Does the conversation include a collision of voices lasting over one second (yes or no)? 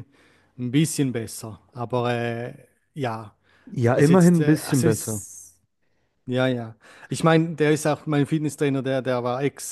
yes